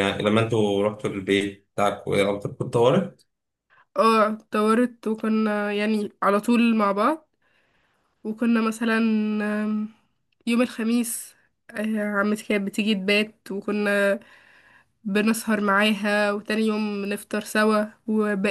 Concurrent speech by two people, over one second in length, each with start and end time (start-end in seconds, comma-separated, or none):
none